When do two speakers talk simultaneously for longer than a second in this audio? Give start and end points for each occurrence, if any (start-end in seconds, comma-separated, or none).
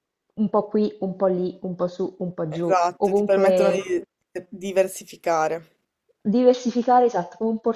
2.5-3.8